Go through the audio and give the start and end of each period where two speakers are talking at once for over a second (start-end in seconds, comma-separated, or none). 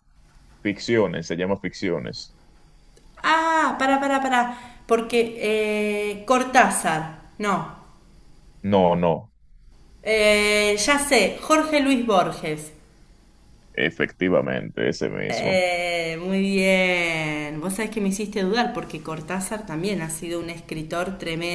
none